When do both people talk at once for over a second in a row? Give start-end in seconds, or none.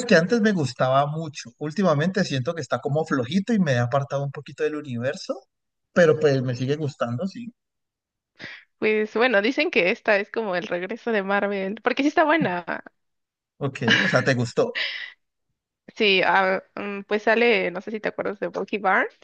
none